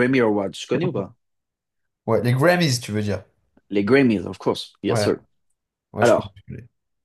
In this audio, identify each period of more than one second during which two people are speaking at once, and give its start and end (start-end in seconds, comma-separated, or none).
none